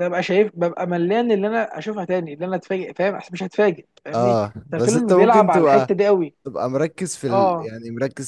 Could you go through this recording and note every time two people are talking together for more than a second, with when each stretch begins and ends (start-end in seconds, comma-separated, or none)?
4.1-5.9